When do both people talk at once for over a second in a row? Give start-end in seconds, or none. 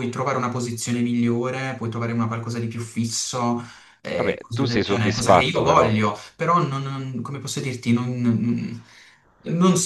4.2-5.9